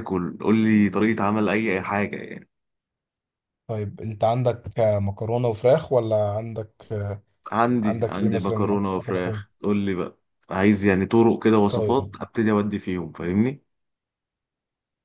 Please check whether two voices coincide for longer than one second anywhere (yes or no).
yes